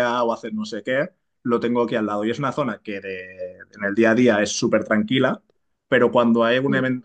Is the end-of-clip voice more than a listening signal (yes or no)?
no